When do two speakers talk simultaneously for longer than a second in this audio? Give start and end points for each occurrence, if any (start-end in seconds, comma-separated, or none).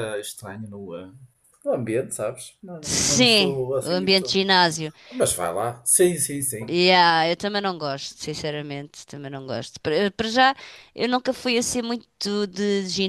2.8-4.4